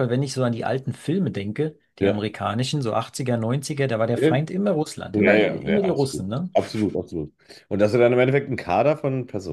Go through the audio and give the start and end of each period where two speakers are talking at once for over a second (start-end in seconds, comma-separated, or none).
5.1-6.5